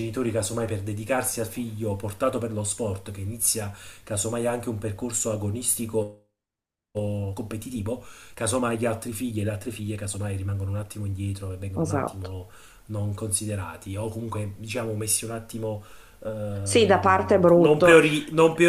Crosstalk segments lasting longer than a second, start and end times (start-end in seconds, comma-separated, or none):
16.6-18.0